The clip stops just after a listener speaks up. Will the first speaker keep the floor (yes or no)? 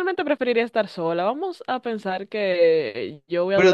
no